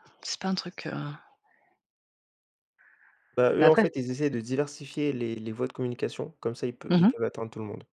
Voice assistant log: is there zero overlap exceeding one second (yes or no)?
yes